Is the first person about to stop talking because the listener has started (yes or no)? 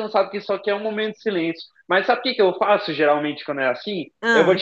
no